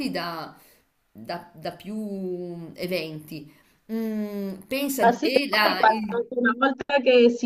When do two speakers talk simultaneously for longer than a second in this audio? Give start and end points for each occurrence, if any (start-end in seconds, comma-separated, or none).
5.0-6.2